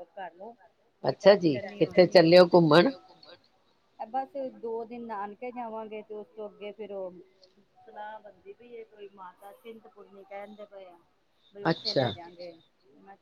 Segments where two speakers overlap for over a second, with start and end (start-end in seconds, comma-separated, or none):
1.1-2.9